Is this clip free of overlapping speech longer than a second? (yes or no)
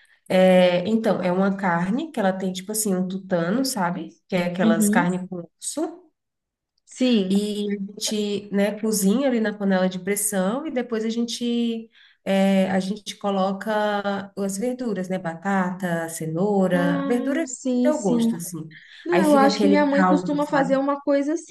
no